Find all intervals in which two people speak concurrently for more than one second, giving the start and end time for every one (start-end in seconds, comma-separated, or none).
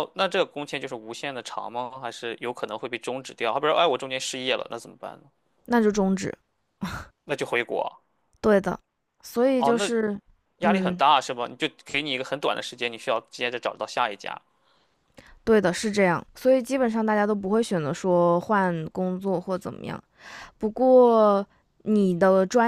none